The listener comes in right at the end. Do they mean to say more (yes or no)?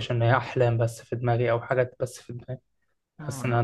no